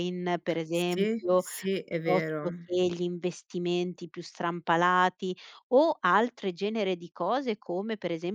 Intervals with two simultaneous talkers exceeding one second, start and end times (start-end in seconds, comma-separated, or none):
0.7-2.5